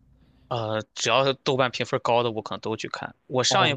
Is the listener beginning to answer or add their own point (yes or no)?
no